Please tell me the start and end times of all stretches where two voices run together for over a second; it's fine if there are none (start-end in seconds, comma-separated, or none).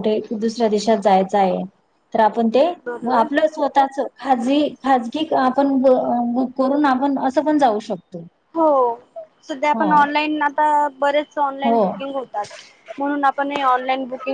none